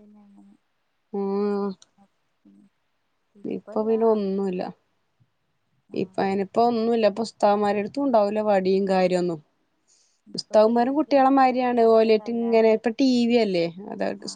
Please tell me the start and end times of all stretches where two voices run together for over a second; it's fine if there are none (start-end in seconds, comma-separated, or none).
10.3-12.7